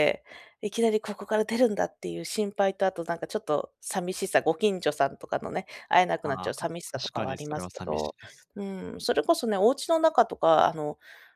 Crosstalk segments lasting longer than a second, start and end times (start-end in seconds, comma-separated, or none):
6.3-8.1